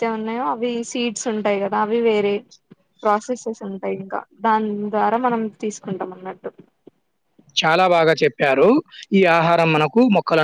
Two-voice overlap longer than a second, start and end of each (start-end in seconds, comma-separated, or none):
none